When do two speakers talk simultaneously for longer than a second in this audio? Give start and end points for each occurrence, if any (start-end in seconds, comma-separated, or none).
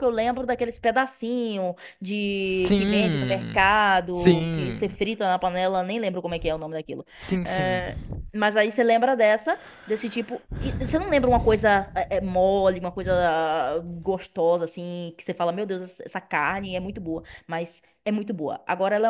2.4-5.0